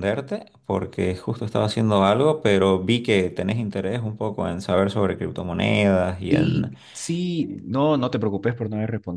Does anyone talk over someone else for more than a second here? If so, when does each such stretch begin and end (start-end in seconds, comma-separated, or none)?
none